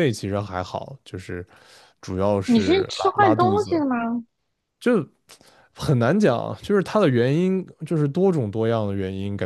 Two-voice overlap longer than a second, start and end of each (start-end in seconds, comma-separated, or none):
2.5-3.8